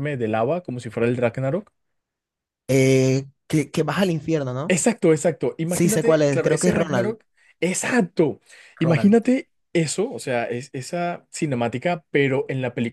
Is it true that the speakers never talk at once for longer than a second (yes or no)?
no